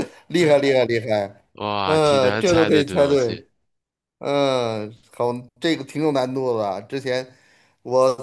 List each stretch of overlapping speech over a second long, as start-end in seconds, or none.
1.9-3.4